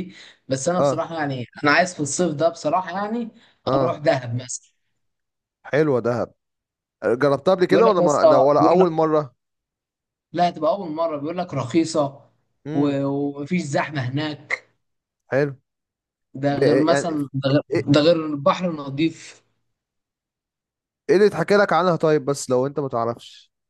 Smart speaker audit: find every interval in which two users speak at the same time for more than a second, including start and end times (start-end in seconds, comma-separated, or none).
7.7-8.9